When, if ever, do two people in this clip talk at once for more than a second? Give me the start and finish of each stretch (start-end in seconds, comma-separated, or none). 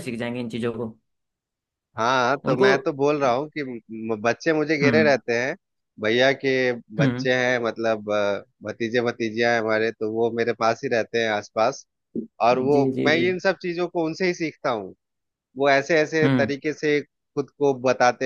none